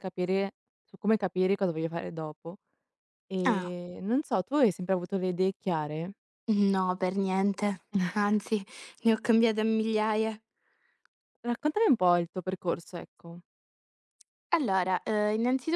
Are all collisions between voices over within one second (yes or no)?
yes